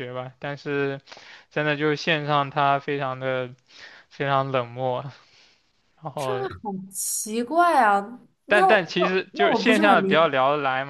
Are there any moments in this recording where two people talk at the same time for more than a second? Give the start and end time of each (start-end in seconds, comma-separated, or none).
8.5-10.3